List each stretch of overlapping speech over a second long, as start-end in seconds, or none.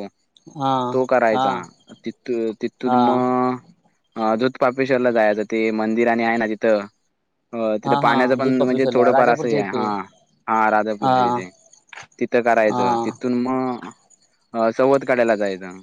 7.9-9.8